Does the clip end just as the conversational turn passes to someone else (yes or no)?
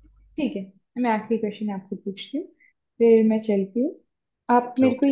no